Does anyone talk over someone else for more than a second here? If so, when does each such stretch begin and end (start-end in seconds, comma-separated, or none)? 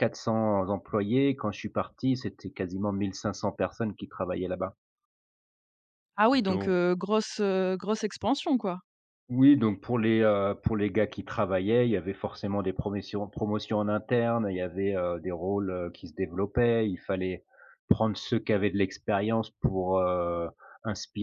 none